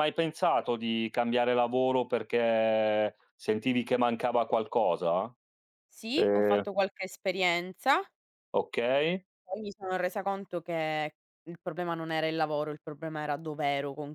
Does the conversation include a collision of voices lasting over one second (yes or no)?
no